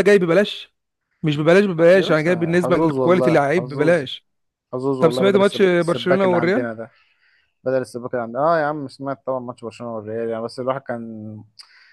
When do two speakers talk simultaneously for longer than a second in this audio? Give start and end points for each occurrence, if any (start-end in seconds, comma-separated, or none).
1.8-4.0, 5.0-6.7